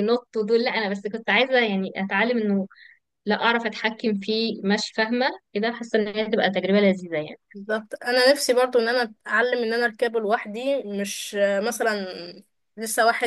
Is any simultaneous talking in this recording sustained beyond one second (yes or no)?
no